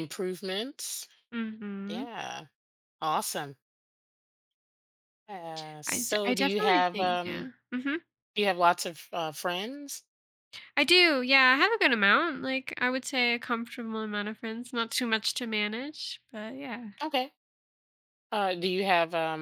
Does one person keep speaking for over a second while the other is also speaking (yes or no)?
yes